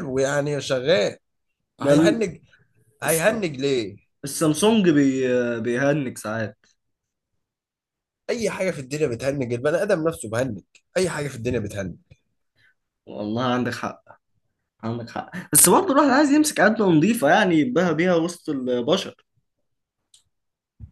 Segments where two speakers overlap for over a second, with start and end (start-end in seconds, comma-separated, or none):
none